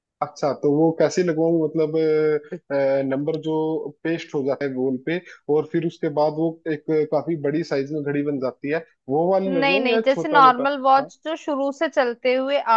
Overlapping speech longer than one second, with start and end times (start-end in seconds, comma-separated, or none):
9.5-11.1